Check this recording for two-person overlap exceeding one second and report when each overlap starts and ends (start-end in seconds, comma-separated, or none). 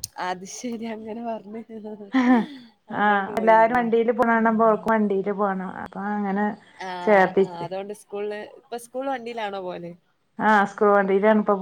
none